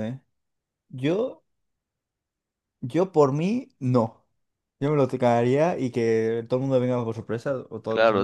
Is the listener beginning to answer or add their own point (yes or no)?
yes